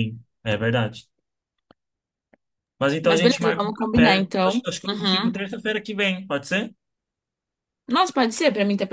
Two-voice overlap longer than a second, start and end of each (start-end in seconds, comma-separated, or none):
3.0-5.3